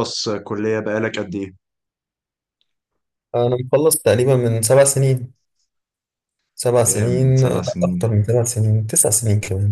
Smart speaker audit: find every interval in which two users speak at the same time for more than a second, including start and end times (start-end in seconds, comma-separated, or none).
6.9-8.1